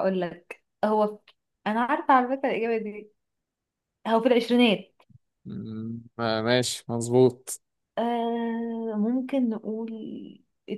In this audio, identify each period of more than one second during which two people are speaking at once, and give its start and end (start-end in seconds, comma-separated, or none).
none